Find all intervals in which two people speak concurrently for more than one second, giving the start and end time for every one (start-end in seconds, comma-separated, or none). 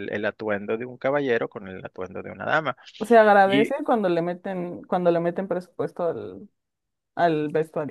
none